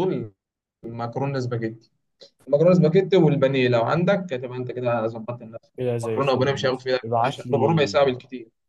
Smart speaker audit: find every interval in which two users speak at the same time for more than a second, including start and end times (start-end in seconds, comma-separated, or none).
5.8-8.1